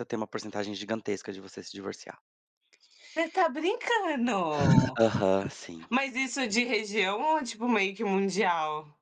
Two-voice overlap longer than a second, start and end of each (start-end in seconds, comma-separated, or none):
none